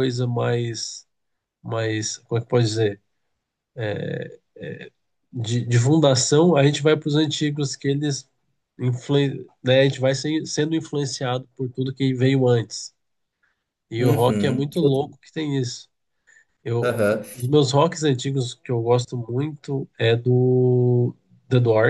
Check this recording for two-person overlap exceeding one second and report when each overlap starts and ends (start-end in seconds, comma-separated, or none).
14.0-15.2